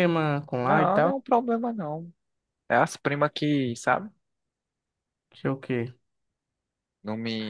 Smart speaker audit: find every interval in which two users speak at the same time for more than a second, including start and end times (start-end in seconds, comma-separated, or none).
none